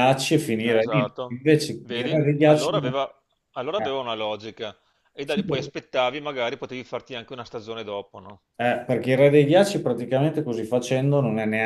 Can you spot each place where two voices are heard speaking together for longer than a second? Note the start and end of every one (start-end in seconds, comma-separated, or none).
0.7-3.0